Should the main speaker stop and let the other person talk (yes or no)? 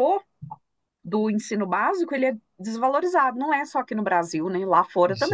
yes